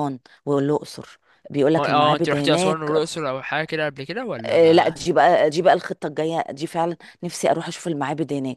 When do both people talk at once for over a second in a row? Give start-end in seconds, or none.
1.8-3.0